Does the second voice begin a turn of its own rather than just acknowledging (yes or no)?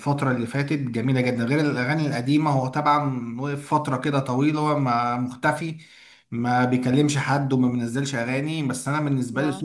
yes